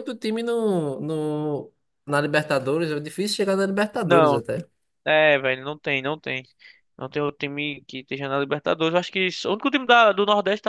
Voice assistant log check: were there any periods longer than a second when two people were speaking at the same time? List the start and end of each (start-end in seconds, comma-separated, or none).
none